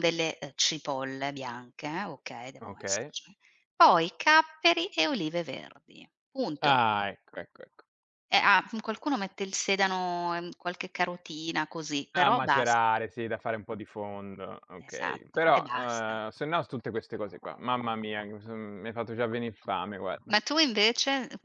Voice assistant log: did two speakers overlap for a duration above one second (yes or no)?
yes